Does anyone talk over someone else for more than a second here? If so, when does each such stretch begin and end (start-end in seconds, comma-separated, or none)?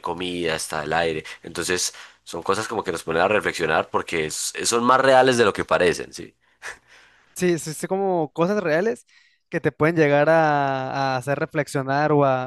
none